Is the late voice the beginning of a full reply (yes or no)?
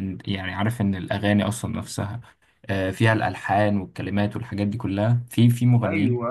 yes